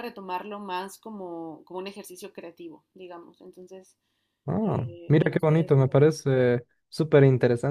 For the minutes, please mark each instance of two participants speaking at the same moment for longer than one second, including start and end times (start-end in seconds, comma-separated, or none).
4.6-6.4